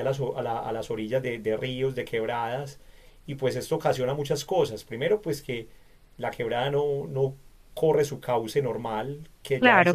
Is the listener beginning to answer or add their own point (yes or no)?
no